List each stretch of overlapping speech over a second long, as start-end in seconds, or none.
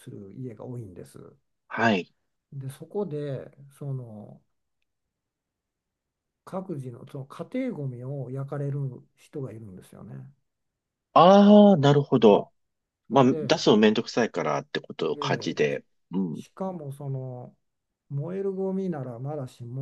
none